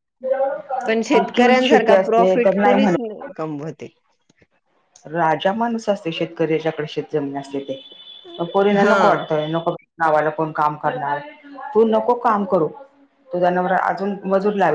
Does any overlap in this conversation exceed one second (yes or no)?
yes